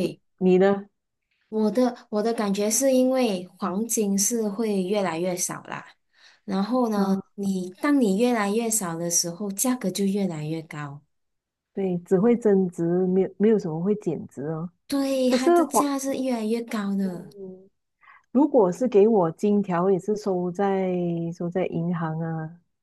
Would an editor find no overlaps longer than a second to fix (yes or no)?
yes